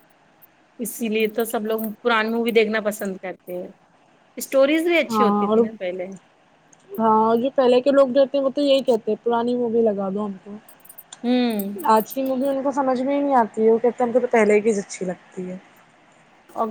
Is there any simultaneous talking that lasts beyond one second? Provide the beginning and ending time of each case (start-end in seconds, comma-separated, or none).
none